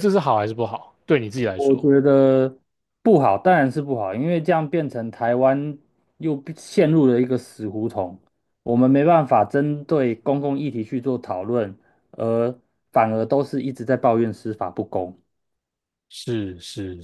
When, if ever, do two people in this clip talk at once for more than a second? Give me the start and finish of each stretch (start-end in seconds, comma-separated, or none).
none